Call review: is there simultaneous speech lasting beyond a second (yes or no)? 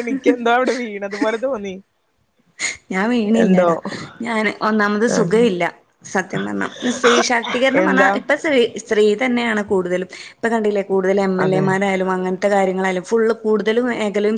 no